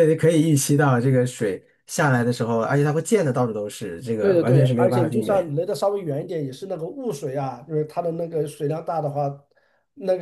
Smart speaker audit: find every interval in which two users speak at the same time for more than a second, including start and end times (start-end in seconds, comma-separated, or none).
4.2-5.5